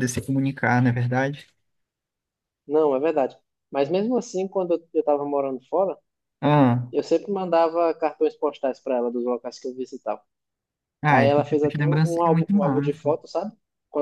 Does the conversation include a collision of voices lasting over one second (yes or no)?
yes